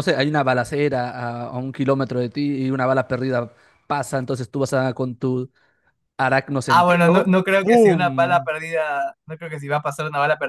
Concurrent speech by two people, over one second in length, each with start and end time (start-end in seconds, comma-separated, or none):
6.7-8.5